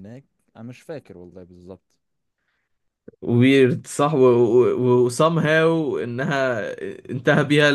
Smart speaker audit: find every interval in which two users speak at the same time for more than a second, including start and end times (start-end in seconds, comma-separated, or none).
none